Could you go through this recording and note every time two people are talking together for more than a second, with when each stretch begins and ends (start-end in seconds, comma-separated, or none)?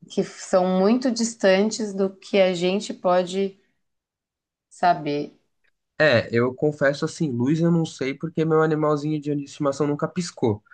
none